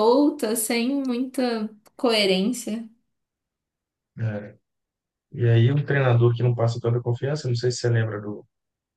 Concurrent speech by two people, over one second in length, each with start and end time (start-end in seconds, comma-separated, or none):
none